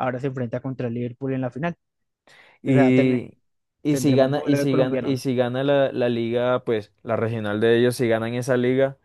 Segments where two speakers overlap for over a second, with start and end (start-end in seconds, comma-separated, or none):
3.9-5.3